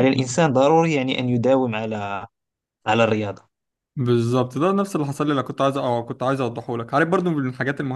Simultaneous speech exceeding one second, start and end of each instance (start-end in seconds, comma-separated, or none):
none